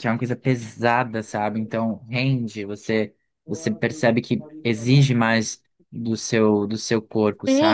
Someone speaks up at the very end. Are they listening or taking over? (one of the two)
taking over